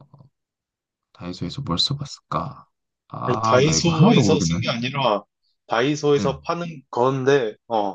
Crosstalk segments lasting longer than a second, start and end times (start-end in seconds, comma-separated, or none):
3.2-4.6